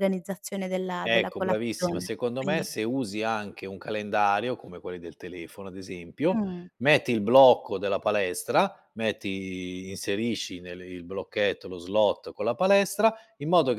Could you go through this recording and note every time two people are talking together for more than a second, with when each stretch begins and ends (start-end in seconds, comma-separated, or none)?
1.0-2.7